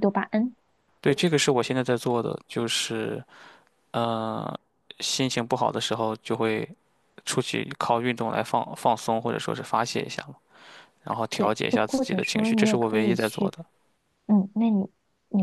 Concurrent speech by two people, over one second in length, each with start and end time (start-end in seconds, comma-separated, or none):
11.3-13.5